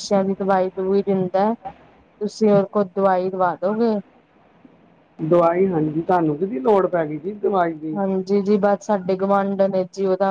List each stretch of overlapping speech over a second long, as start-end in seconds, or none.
none